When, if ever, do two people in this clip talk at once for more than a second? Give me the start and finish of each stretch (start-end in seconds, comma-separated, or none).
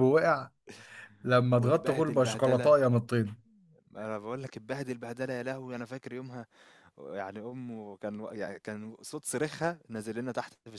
1.6-2.8